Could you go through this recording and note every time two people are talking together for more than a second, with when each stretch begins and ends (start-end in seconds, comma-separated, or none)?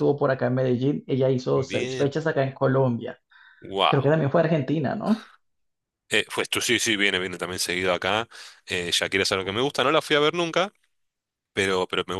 none